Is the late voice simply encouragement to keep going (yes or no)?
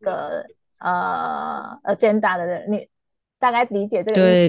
no